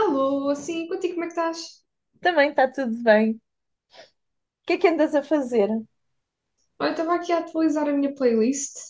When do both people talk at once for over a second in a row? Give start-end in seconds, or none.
none